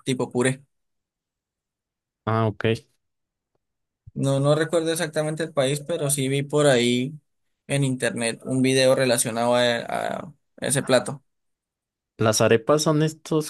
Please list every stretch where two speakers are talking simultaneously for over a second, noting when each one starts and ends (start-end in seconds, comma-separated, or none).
none